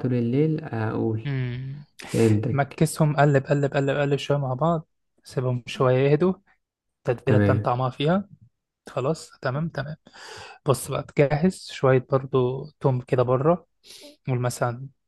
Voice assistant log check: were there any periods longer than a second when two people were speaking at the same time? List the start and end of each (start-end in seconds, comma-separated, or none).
none